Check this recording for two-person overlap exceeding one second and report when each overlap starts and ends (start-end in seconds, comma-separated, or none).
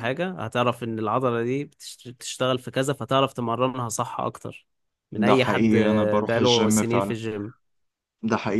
5.1-7.1